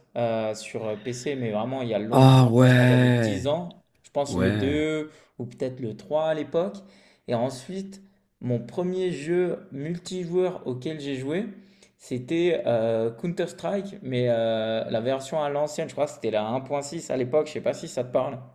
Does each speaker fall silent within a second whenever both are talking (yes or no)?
no